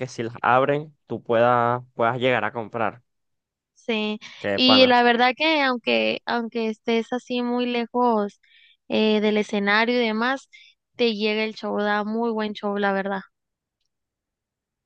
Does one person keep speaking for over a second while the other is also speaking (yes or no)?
no